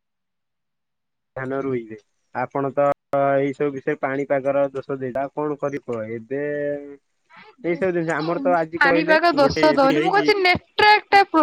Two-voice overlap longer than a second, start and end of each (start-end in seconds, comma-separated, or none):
7.7-10.3